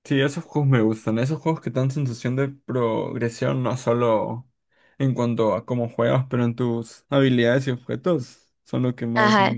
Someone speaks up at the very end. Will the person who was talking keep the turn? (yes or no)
no